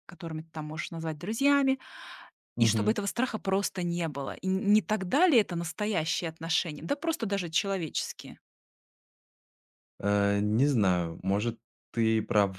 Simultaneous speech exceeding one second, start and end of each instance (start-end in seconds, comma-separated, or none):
none